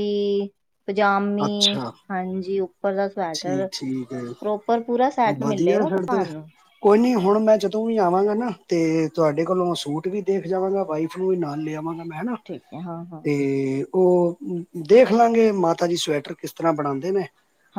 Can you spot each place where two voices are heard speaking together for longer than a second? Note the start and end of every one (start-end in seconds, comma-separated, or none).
none